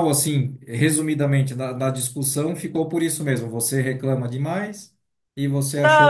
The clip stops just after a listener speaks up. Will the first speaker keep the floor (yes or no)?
no